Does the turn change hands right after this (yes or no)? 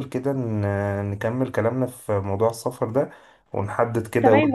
yes